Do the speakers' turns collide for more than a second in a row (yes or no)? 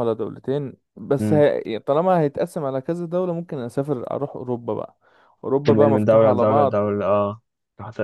yes